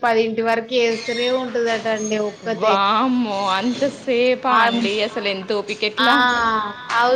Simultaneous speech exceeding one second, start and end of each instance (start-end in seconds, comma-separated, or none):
none